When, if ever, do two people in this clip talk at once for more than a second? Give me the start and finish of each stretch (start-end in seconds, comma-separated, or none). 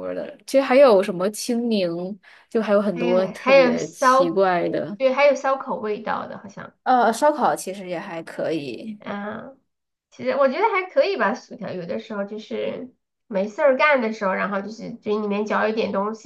2.9-4.4